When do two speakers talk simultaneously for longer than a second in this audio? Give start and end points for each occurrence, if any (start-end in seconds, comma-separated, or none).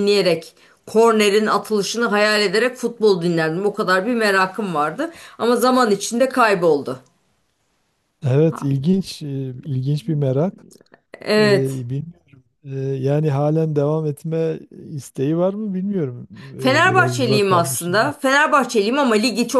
16.6-17.9